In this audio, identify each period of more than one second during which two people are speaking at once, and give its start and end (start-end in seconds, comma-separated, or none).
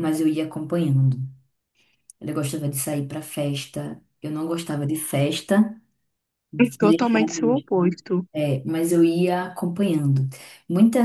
6.6-7.9